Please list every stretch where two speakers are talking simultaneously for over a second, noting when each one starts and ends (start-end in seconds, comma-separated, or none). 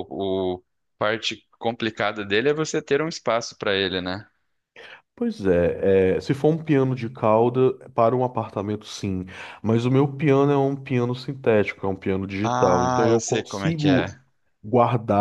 12.4-14.1